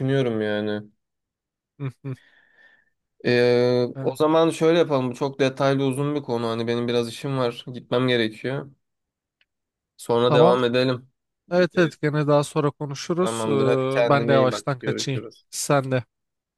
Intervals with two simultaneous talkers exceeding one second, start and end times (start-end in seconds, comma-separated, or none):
13.2-15.4